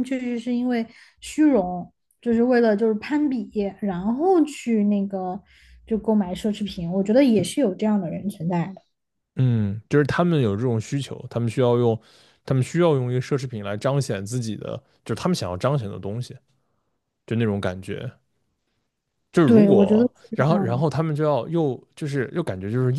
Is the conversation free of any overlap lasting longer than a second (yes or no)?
no